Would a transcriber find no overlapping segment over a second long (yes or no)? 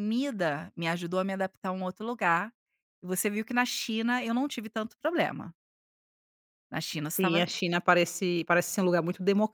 yes